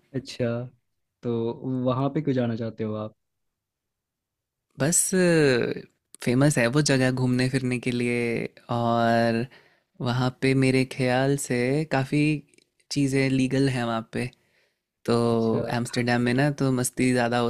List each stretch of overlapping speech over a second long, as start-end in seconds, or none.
none